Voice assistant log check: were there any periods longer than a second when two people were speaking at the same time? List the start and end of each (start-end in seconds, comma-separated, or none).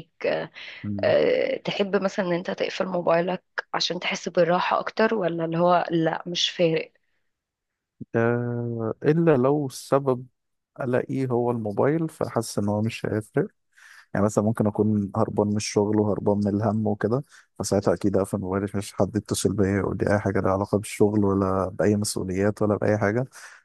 none